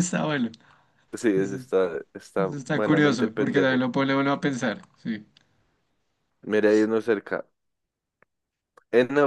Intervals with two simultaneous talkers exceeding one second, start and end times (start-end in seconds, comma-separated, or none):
2.5-3.9